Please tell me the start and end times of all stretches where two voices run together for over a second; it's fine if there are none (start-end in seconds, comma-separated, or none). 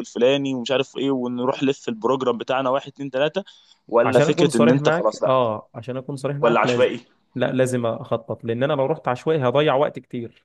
4.0-5.4